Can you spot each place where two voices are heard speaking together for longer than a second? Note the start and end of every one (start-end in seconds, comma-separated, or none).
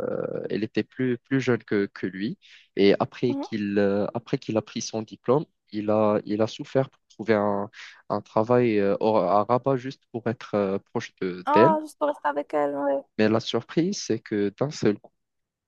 none